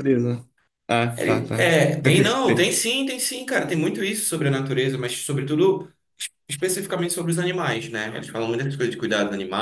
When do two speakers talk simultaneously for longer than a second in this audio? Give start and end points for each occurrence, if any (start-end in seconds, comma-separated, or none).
1.2-2.7